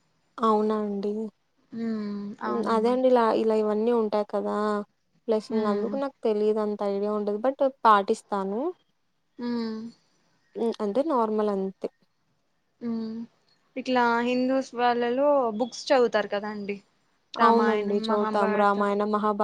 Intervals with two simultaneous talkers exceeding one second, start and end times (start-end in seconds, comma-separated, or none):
17.4-18.9